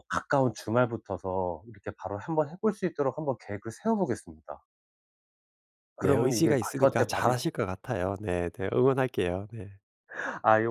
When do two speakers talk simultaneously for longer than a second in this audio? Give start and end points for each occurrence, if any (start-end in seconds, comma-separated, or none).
6.0-7.3